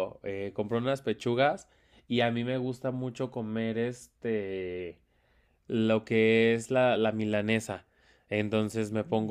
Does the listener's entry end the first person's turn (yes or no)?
no